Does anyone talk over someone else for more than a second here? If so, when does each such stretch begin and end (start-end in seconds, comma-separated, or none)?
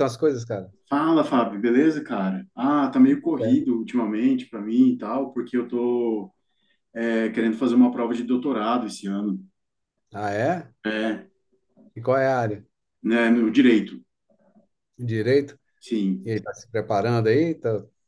none